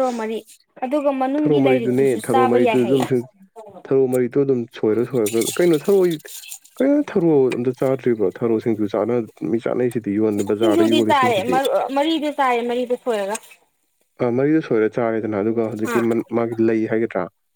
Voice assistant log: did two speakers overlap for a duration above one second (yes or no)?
yes